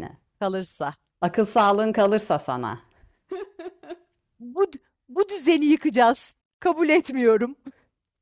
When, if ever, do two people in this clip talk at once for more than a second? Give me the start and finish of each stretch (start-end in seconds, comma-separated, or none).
none